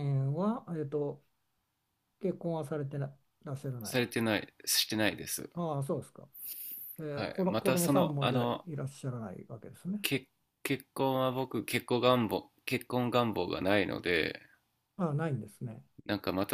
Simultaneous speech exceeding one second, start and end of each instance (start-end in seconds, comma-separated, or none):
7.1-8.7